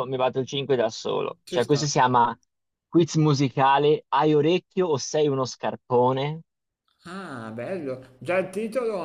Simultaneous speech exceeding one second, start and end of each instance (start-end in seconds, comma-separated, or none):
none